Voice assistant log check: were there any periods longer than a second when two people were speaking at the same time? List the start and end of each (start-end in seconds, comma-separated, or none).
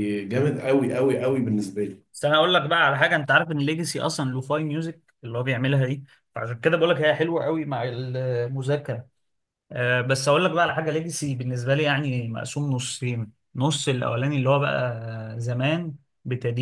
none